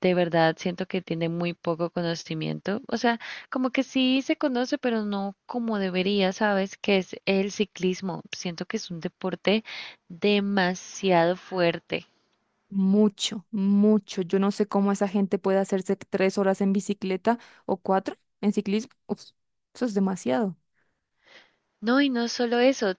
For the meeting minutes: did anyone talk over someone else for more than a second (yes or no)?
no